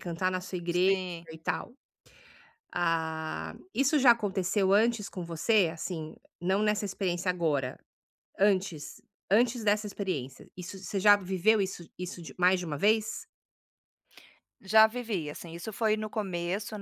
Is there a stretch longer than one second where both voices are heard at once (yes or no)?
no